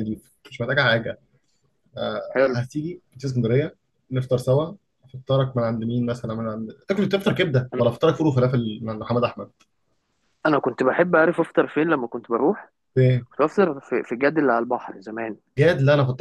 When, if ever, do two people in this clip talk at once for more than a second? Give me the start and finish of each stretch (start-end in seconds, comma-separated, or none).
none